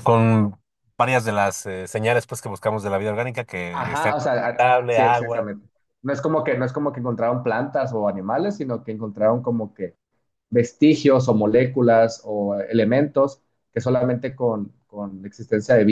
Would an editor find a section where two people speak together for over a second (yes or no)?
yes